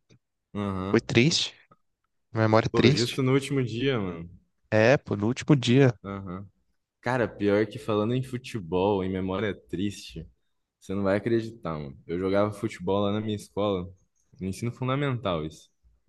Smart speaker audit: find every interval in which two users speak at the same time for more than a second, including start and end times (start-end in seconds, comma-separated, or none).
none